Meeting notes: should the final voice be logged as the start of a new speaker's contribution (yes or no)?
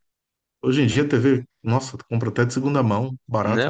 yes